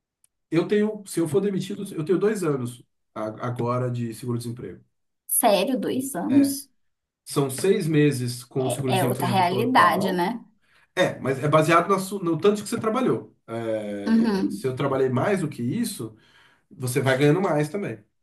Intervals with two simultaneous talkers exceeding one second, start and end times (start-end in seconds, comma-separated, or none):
8.9-10.3